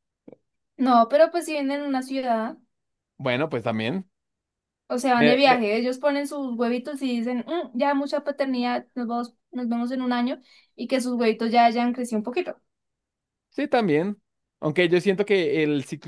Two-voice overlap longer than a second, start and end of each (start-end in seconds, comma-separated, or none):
none